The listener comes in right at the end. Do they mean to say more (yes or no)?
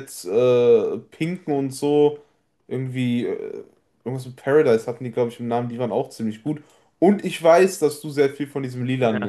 yes